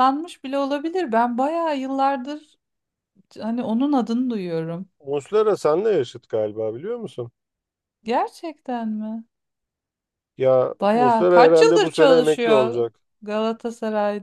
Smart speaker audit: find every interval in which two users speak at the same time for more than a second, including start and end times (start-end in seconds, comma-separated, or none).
10.8-12.8